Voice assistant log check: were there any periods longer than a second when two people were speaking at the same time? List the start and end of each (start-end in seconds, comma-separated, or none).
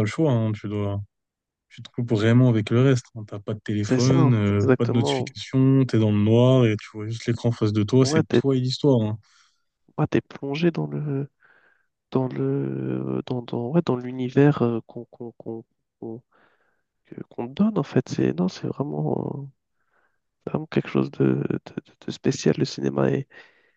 3.8-5.3